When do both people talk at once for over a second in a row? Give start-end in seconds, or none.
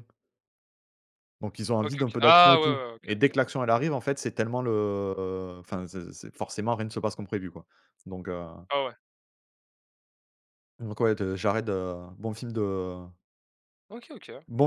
1.8-3.3